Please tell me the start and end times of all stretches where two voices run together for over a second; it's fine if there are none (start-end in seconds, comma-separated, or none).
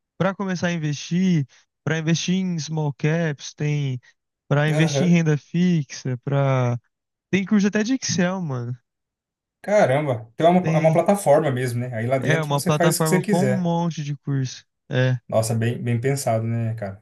12.2-13.7